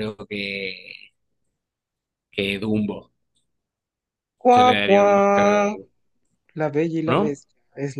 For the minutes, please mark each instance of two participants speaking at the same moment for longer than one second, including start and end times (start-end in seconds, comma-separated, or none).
4.5-5.8